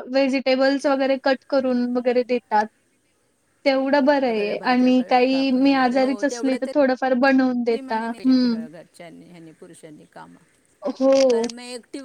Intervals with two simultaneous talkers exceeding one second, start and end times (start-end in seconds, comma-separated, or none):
4.3-5.7